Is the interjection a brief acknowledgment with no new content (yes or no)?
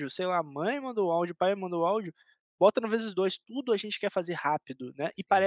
yes